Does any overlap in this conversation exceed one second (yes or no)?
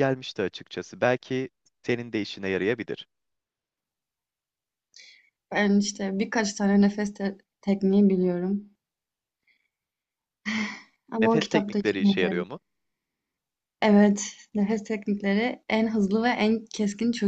yes